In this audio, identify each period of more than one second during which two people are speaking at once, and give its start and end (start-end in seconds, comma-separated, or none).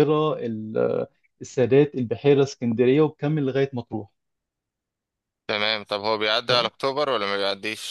none